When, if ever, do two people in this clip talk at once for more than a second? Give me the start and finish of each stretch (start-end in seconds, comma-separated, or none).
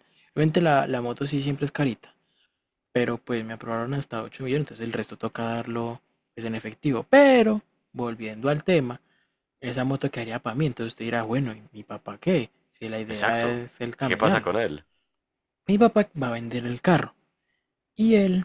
13.1-14.6